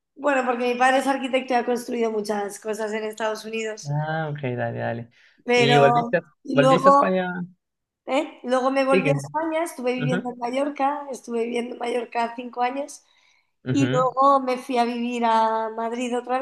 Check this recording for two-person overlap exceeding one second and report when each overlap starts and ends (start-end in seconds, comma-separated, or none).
5.5-7.1